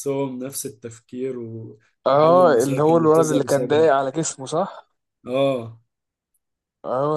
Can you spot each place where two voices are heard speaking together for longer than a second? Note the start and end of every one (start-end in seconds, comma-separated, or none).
2.1-3.9